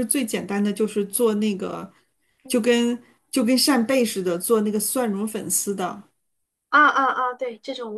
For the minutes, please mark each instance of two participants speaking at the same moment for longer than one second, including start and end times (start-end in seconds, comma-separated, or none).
none